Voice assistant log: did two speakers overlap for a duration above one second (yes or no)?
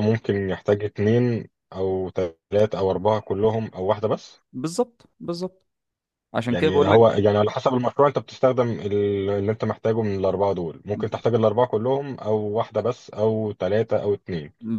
no